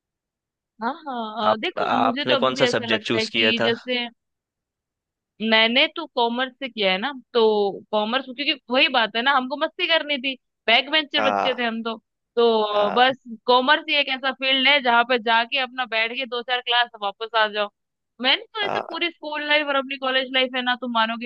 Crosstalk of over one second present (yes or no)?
yes